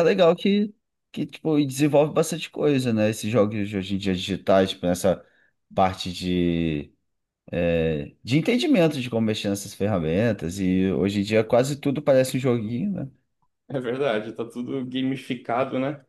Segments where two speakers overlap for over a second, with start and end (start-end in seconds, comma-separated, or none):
none